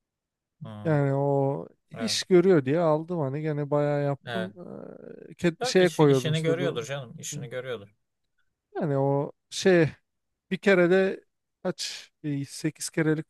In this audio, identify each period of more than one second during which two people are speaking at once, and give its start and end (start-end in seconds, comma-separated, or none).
5.6-6.9